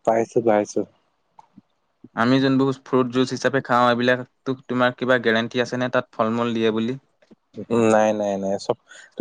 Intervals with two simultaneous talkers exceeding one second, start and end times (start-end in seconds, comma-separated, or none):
none